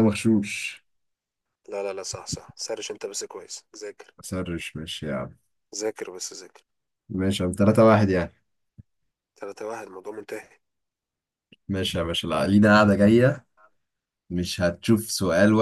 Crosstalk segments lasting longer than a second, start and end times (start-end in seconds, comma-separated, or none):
none